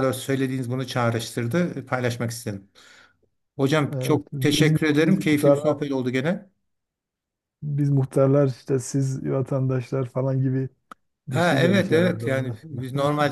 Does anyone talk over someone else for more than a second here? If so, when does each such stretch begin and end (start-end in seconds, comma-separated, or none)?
3.9-5.8, 11.3-12.6